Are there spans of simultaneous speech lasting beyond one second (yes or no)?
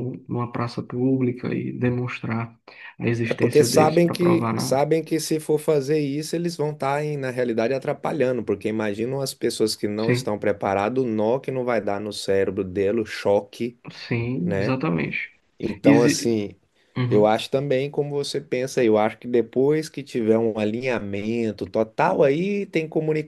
yes